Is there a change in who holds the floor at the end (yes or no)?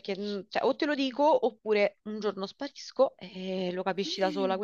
no